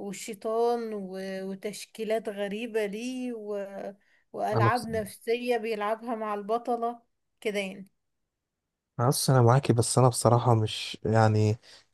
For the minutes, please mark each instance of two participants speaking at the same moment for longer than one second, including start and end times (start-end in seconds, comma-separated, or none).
none